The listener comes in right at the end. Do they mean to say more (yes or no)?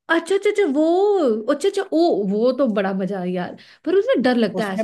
yes